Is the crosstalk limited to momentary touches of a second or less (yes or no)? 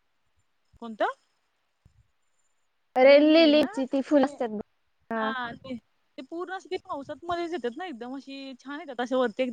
no